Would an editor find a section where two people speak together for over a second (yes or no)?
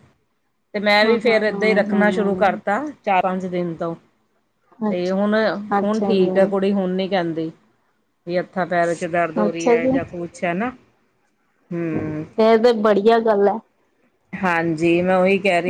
yes